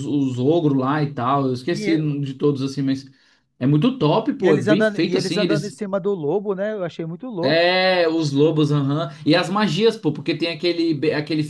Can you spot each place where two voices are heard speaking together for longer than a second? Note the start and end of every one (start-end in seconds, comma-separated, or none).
4.4-5.8